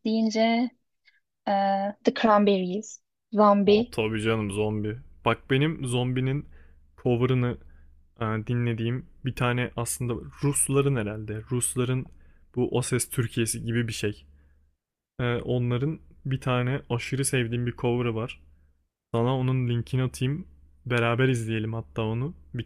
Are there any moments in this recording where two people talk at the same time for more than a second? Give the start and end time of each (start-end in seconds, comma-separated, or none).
none